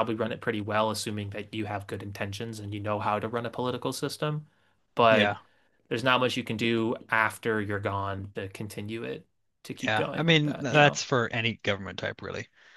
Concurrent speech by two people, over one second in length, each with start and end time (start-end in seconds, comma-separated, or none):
9.8-11.0